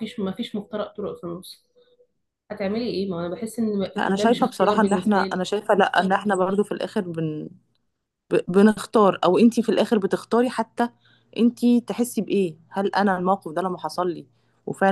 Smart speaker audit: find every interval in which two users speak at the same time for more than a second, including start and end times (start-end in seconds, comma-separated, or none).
4.0-5.5